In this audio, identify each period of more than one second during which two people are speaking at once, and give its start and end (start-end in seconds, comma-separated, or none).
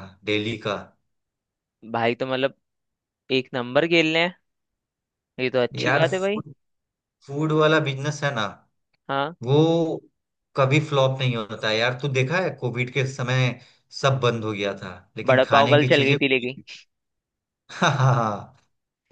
15.3-16.6